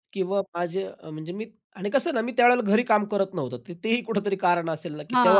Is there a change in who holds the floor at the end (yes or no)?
yes